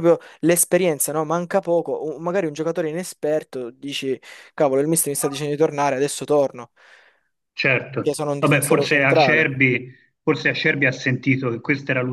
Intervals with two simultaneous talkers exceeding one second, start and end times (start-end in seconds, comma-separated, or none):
8.0-9.5